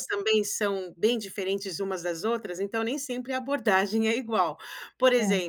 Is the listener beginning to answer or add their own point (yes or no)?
no